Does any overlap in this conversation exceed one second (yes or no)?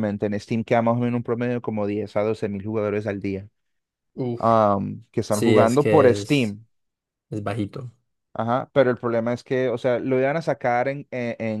yes